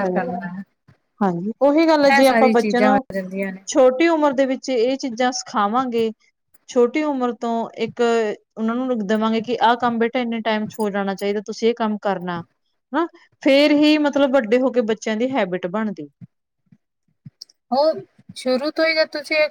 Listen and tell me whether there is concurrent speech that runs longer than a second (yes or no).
no